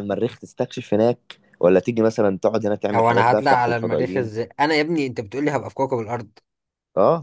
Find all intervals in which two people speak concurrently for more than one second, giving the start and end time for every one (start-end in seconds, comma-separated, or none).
2.9-4.3